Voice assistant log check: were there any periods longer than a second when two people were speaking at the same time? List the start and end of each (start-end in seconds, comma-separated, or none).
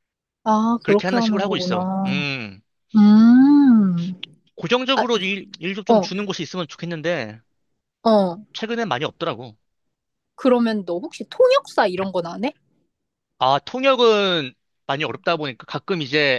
0.8-2.2